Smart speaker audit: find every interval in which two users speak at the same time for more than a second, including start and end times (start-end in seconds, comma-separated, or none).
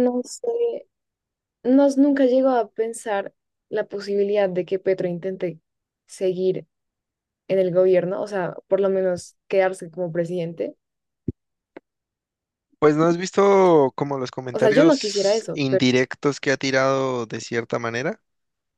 14.5-15.9